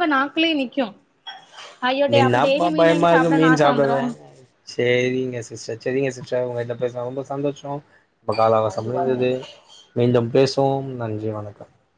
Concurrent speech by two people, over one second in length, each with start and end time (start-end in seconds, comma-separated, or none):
2.2-4.0